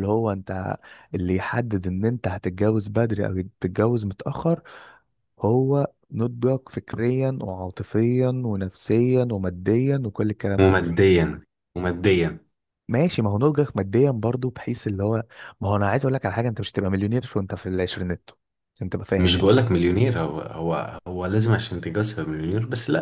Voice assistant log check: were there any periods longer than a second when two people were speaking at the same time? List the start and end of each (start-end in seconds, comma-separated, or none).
none